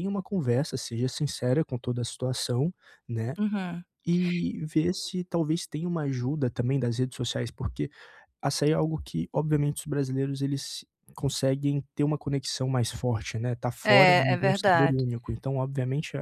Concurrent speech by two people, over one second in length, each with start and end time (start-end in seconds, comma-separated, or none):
13.8-15.0